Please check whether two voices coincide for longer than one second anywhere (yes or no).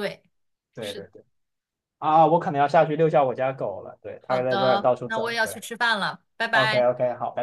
yes